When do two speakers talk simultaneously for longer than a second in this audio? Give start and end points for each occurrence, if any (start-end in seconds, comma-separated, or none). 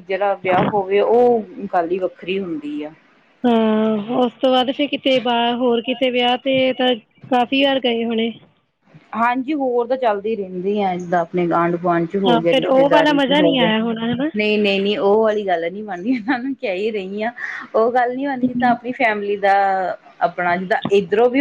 12.3-13.7